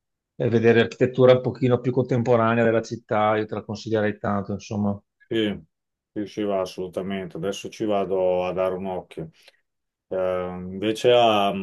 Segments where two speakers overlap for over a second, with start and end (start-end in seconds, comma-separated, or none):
none